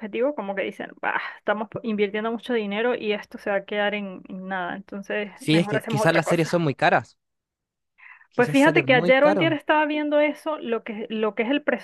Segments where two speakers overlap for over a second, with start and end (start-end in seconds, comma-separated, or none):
5.4-6.6, 8.3-9.6